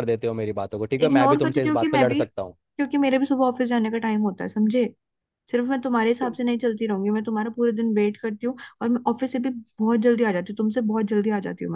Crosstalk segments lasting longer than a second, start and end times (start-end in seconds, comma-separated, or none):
1.0-2.6